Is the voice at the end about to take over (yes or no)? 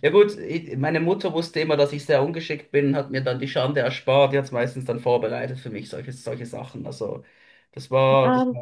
no